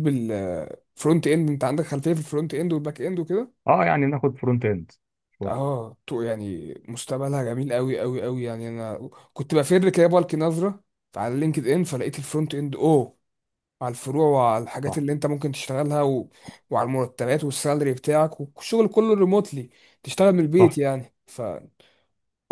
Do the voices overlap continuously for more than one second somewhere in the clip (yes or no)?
no